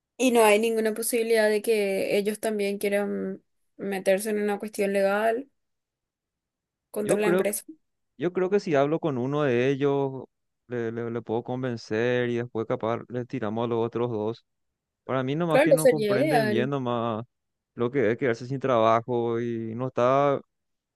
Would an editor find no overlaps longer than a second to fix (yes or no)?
no